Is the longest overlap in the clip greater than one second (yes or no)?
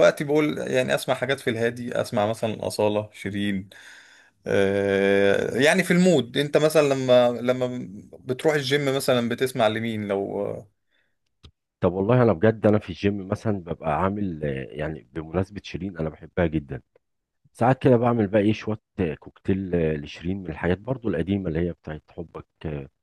no